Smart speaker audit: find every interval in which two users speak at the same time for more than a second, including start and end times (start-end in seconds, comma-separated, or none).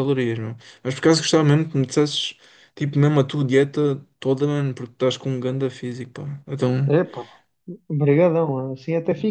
none